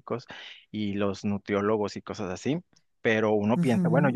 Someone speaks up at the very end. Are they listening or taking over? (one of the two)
listening